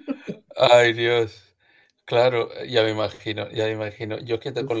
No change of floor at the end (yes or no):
yes